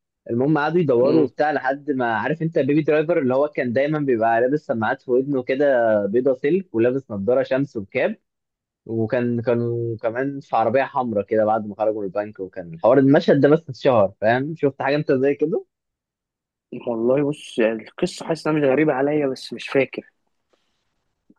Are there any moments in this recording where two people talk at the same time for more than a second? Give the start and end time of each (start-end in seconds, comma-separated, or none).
none